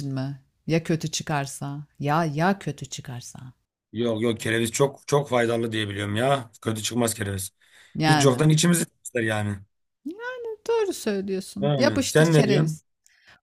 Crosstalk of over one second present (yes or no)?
yes